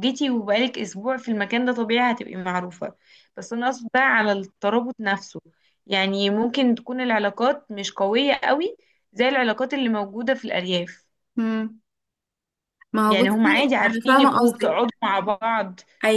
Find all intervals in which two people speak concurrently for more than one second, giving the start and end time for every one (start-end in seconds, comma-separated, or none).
13.1-14.8